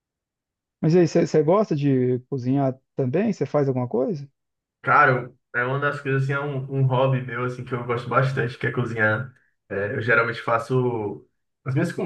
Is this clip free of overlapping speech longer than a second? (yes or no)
yes